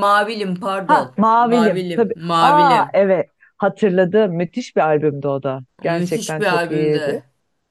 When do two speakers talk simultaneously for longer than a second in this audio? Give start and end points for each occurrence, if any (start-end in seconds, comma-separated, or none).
0.8-3.0, 5.9-7.2